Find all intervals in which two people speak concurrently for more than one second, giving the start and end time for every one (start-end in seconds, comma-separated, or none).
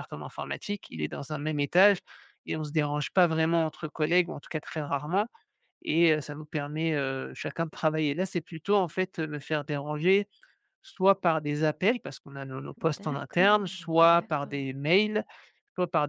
12.8-14.6